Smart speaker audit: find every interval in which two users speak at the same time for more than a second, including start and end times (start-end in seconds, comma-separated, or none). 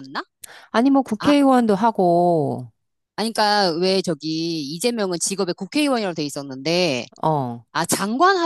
none